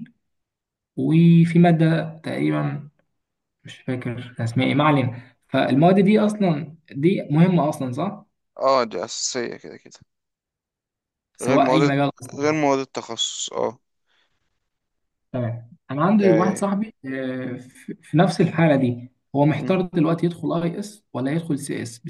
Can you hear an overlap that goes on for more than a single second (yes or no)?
no